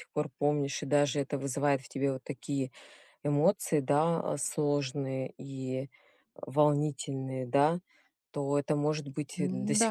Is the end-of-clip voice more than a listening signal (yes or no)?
no